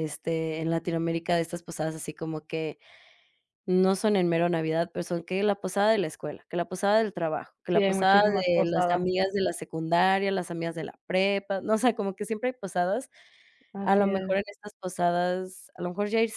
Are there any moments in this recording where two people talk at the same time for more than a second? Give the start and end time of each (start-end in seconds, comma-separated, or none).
7.7-9.1